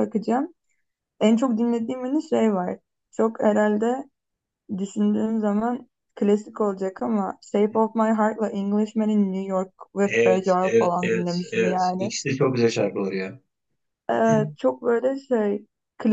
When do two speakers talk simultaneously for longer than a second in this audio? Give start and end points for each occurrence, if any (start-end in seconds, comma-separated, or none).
10.0-12.1